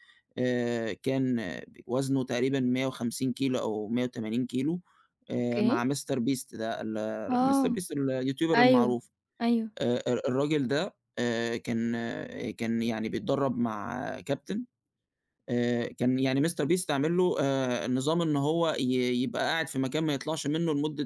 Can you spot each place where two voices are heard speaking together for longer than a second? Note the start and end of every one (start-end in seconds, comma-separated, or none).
none